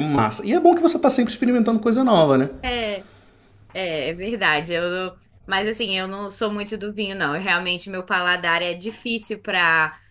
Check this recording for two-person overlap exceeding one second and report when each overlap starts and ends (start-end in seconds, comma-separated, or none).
none